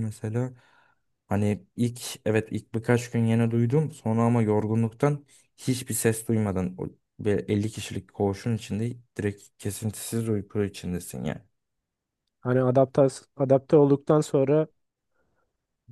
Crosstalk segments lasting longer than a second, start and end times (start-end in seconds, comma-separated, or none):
none